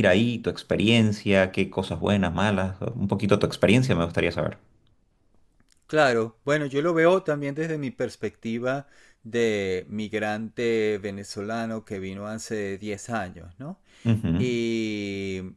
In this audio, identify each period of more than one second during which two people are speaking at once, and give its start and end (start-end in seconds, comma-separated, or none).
none